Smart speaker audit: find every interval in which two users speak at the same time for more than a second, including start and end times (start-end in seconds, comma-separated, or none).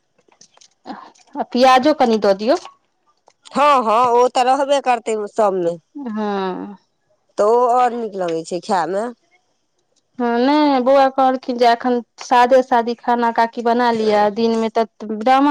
none